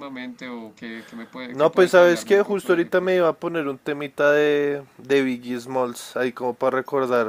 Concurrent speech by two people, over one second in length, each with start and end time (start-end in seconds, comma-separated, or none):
1.5-3.2